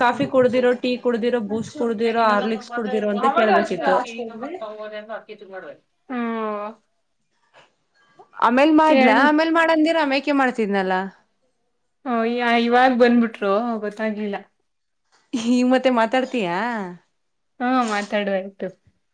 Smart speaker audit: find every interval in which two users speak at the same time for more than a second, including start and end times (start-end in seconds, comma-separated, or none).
1.9-3.9